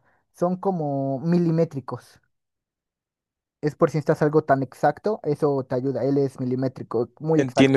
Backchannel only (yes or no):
no